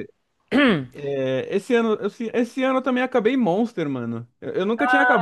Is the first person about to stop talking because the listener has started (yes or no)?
yes